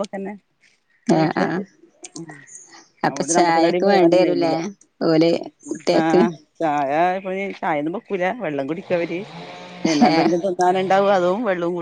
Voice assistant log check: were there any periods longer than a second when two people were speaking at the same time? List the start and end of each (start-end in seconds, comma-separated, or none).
3.1-4.5